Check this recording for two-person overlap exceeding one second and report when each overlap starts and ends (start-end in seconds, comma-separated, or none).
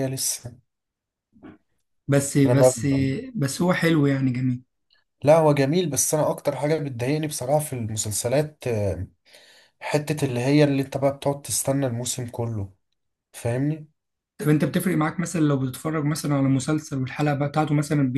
none